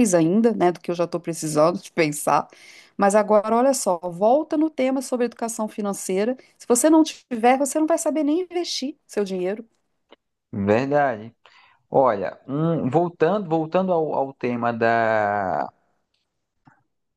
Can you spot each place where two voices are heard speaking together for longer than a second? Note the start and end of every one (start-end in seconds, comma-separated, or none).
none